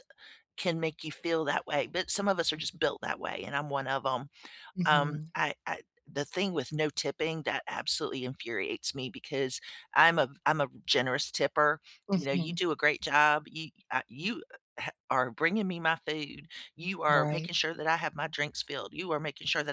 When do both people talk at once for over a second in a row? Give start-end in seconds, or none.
none